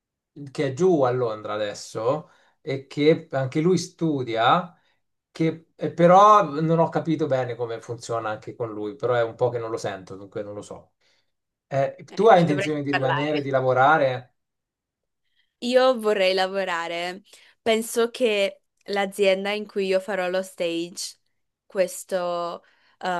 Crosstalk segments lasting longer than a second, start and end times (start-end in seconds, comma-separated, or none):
12.1-13.6